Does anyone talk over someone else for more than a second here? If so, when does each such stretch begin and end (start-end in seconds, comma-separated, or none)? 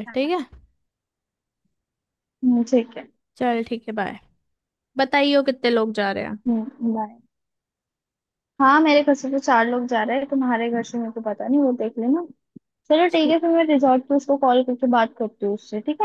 none